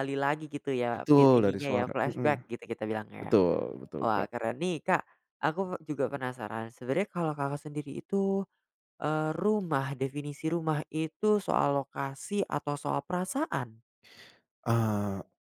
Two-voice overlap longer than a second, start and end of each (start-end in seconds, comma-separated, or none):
0.9-2.3